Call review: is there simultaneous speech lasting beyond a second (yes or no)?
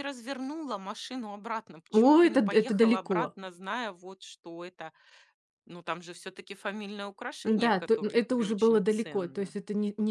yes